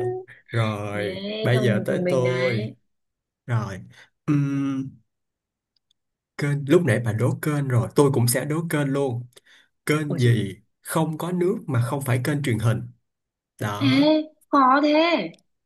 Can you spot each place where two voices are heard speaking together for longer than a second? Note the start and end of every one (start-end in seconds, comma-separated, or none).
0.9-2.7